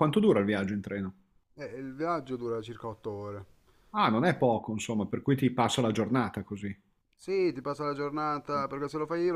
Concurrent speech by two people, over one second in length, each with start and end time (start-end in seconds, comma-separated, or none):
none